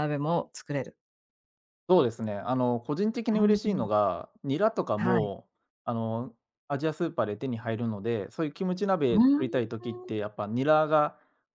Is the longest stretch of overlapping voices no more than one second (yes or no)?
yes